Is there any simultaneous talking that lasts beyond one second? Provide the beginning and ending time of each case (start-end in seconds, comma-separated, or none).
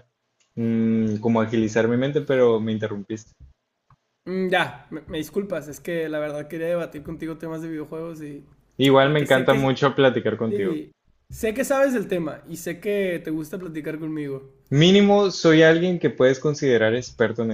none